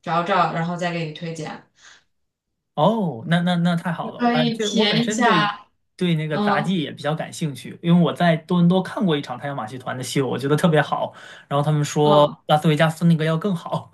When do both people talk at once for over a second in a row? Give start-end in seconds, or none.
4.2-5.5